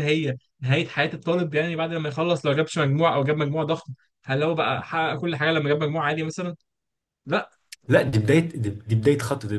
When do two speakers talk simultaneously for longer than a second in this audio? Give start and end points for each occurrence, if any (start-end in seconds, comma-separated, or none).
none